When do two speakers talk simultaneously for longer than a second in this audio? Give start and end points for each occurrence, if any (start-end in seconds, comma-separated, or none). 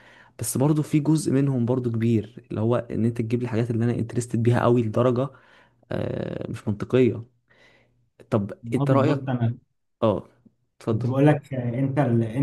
none